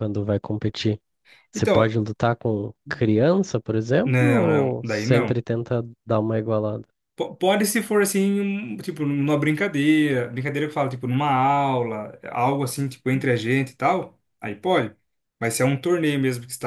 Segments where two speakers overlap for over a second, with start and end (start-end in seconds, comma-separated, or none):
4.0-5.4